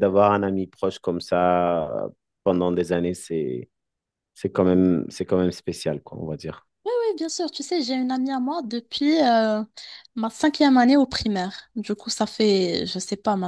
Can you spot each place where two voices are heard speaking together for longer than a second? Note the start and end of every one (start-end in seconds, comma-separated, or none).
none